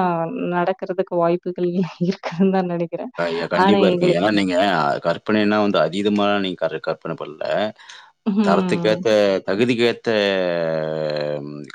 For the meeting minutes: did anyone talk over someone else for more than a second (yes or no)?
no